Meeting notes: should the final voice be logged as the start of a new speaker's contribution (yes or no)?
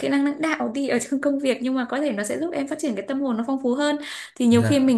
no